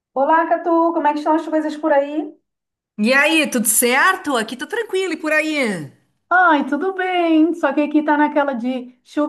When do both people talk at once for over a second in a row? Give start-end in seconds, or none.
none